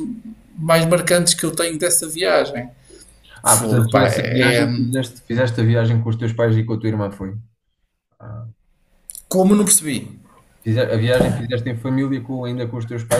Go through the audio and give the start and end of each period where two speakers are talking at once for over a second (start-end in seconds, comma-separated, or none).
3.4-4.7